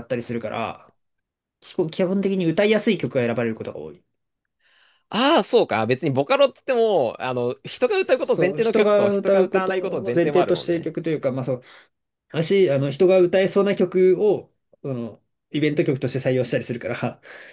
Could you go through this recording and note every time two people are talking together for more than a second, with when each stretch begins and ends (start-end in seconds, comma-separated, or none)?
7.7-10.9